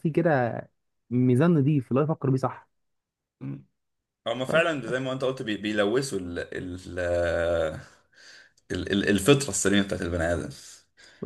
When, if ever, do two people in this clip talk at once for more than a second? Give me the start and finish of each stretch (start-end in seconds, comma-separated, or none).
none